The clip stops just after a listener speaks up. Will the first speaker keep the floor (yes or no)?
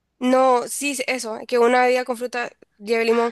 no